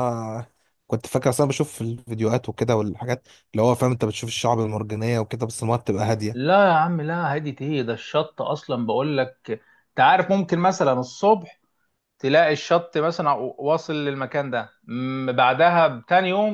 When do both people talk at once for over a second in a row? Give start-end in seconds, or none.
none